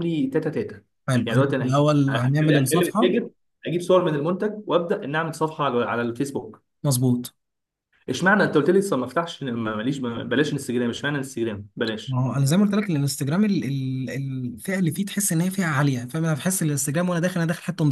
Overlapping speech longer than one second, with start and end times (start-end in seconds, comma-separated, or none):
1.2-3.2